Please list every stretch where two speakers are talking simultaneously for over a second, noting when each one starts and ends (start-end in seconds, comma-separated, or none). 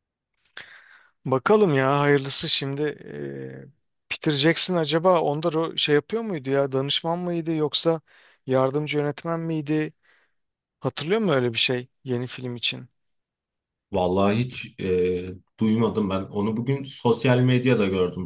none